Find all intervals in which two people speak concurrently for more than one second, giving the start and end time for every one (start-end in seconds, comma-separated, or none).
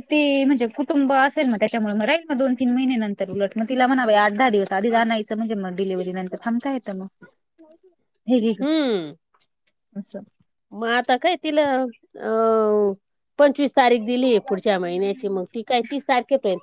none